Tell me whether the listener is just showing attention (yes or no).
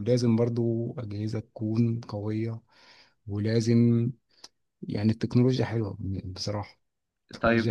no